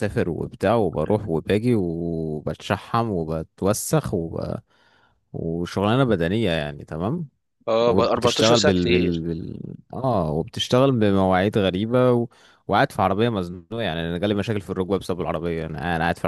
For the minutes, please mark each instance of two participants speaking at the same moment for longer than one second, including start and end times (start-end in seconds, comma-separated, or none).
7.8-9.2